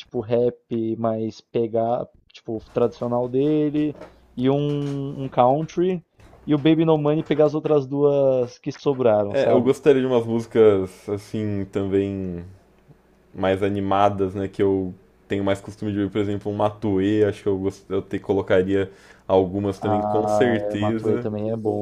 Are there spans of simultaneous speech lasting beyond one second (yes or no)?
yes